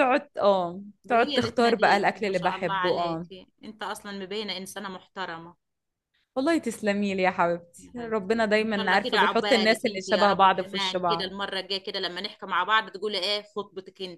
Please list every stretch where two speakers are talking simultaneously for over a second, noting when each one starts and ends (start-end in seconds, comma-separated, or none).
1.1-3.2, 7.8-11.3